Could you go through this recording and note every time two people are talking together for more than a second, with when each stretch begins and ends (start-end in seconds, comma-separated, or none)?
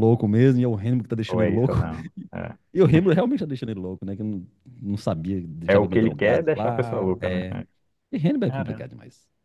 5.7-7.6